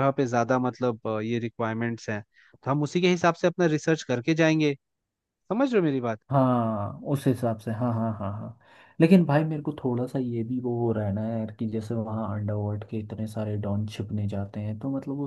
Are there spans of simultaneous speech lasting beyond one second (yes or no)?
no